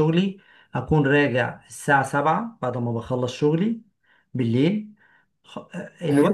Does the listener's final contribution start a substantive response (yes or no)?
no